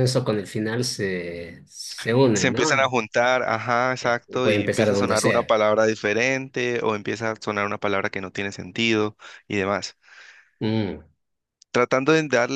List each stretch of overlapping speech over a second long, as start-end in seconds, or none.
4.0-5.5